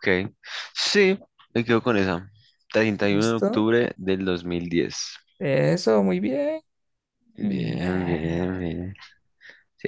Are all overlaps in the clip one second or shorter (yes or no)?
no